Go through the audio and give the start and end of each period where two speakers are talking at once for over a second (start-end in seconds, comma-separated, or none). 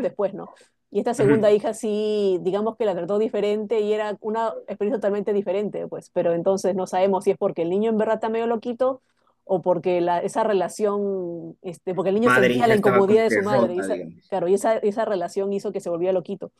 12.3-14.3